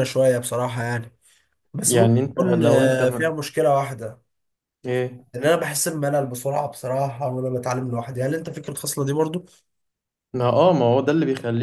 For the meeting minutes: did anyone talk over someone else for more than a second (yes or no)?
yes